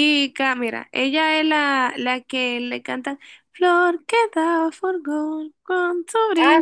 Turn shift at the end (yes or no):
yes